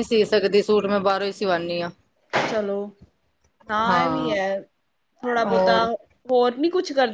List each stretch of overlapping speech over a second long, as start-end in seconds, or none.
none